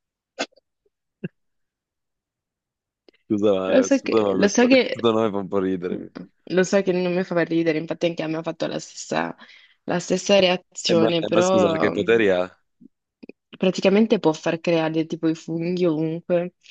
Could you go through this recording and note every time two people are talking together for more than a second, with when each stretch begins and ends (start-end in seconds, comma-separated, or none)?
3.7-5.1, 10.9-12.2